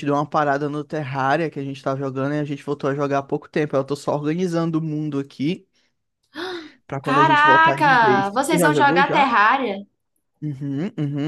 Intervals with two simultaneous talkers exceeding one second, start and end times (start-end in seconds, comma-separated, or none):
7.0-9.3